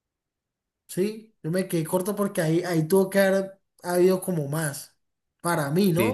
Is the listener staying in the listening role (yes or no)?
no